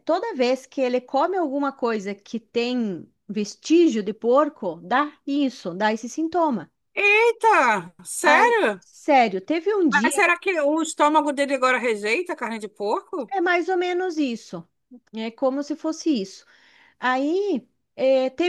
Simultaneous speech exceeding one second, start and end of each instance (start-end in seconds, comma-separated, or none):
none